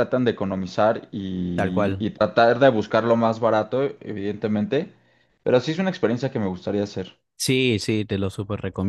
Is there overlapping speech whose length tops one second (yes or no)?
no